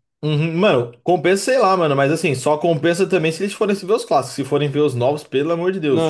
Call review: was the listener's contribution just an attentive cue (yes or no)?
no